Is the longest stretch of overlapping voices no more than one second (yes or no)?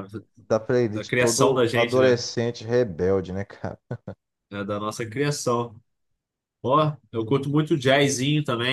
no